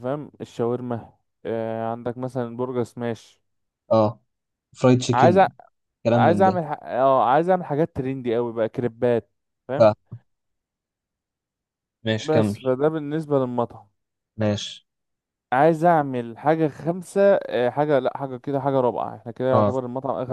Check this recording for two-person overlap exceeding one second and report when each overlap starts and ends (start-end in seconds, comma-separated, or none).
none